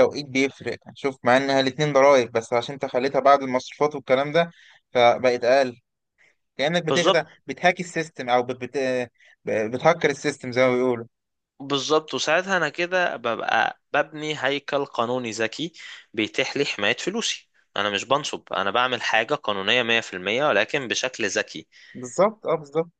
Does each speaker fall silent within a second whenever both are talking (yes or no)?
yes